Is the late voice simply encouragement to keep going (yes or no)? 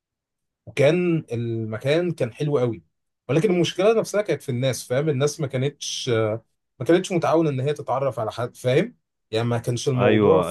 no